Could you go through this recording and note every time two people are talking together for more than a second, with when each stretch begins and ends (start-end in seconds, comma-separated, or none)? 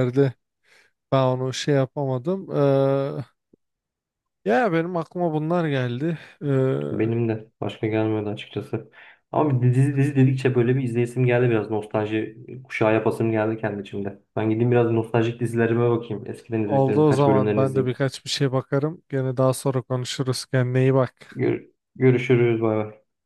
16.6-18.0